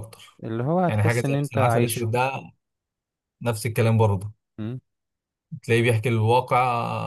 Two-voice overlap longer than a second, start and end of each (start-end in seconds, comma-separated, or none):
0.9-2.1